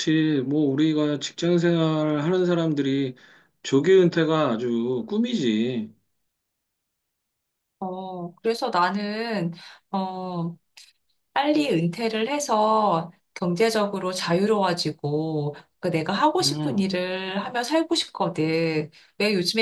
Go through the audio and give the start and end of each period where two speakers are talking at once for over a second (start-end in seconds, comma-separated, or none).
none